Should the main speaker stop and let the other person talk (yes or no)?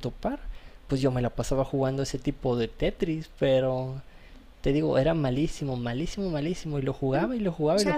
yes